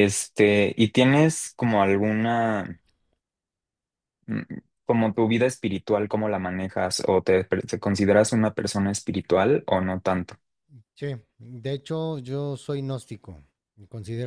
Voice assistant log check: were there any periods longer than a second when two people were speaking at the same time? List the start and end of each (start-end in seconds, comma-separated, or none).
none